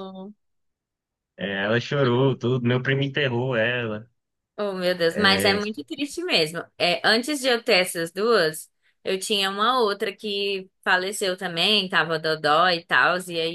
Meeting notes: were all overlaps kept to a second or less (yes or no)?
yes